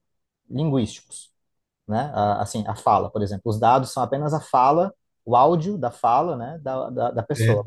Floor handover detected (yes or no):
no